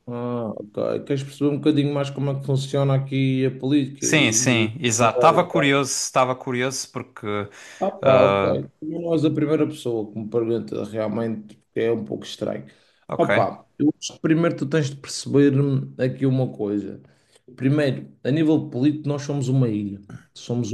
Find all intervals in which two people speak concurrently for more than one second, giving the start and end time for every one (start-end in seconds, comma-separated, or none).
4.0-5.8